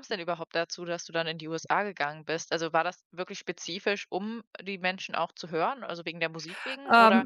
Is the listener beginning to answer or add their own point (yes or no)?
yes